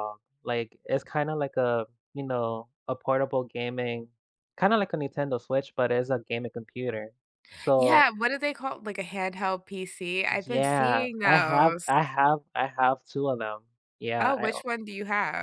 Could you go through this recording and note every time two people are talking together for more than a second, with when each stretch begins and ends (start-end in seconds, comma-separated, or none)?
10.3-11.9